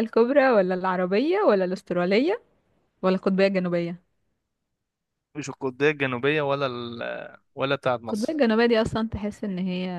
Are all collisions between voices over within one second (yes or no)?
yes